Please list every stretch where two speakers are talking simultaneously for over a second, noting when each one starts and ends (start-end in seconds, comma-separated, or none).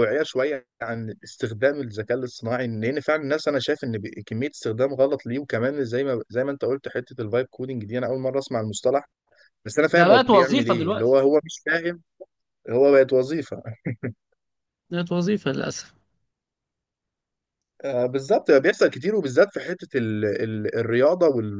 9.9-11.2